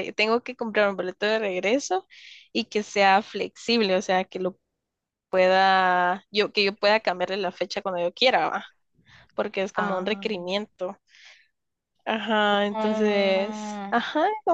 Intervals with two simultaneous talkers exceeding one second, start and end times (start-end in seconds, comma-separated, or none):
12.7-13.9